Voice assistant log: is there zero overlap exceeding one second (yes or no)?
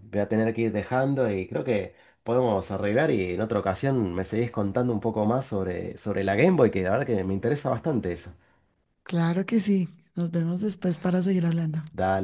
yes